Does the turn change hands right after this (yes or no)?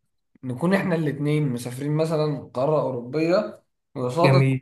no